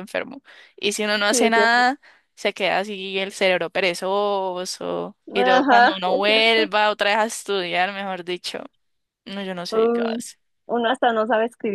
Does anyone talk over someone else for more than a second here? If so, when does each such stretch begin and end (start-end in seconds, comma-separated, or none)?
5.3-6.7